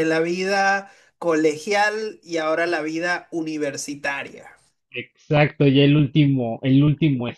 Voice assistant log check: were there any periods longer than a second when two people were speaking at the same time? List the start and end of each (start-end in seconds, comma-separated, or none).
none